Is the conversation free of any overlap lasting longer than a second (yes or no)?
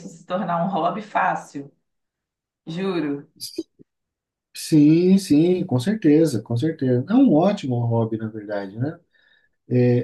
yes